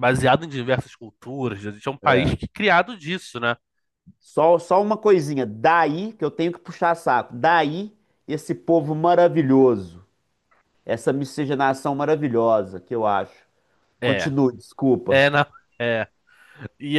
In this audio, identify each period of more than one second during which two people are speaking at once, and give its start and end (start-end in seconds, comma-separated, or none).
none